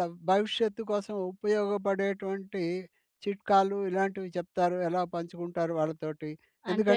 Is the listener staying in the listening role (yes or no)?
yes